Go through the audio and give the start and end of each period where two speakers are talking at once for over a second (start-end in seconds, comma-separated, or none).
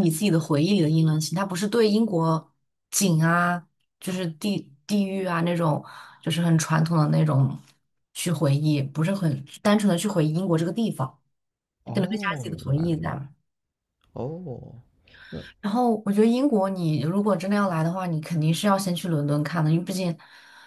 11.9-13.2